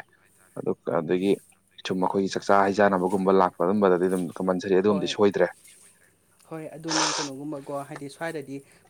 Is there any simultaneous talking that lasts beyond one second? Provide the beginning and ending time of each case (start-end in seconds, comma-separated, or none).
none